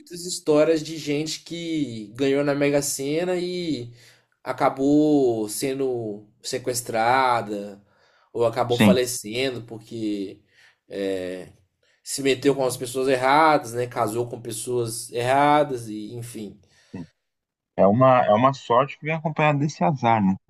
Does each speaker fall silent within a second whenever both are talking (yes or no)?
yes